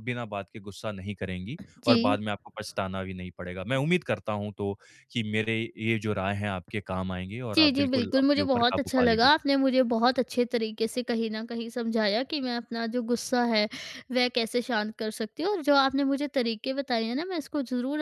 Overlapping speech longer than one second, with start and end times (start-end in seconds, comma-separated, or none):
7.5-9.3